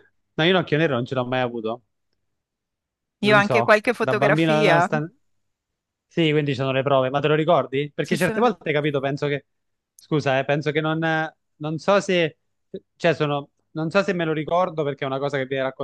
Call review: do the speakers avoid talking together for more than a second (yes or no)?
no